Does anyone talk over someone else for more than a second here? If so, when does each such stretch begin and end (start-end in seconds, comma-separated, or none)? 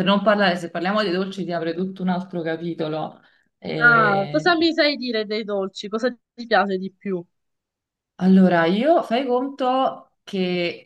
none